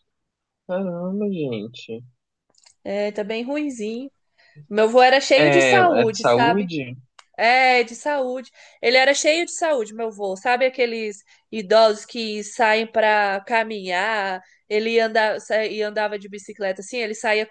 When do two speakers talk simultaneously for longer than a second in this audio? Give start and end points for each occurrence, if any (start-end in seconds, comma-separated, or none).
5.4-6.7